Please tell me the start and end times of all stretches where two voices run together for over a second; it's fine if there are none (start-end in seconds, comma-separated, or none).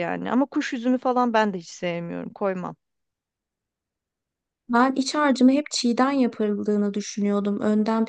none